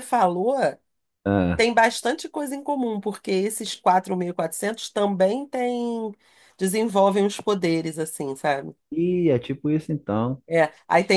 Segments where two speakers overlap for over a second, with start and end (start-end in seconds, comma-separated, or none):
none